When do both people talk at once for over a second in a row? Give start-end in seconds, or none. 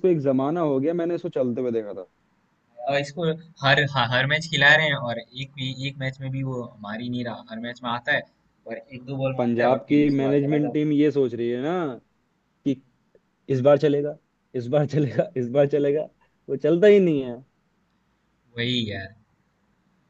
9.4-10.9